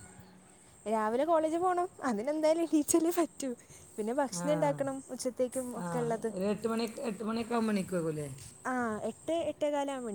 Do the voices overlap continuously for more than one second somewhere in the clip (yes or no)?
no